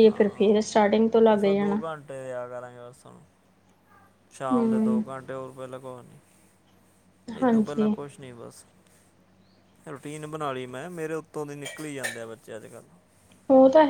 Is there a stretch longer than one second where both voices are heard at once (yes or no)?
no